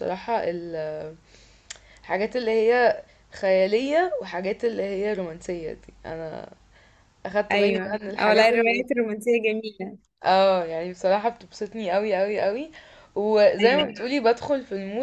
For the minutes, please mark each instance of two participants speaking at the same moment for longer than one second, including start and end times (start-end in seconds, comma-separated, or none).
7.5-8.8